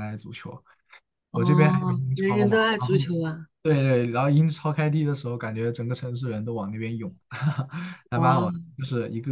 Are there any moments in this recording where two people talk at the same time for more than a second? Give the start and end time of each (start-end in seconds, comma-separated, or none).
1.3-3.1